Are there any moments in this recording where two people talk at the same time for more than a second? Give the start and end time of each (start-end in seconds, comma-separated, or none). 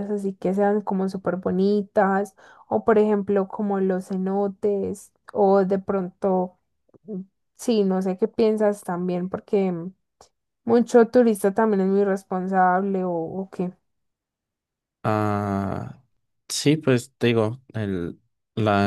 none